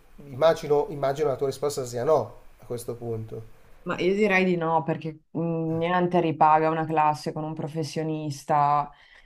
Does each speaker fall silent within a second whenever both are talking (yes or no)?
yes